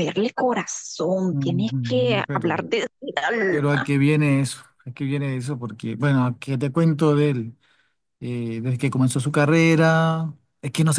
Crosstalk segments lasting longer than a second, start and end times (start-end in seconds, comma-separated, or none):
1.3-2.6